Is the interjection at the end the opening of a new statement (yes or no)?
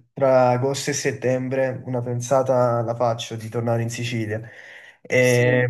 no